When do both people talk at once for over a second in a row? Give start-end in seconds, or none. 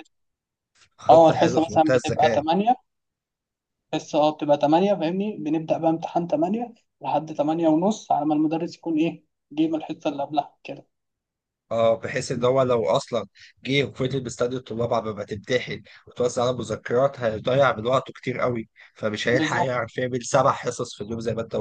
1.1-2.4